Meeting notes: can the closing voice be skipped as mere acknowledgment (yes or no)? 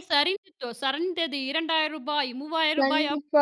no